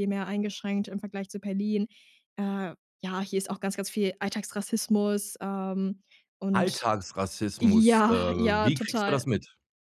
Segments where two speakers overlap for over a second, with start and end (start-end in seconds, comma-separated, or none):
7.6-9.2